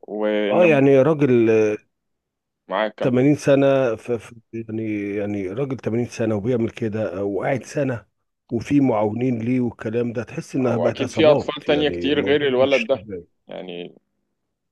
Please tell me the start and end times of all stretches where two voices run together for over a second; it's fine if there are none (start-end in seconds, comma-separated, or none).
10.6-13.1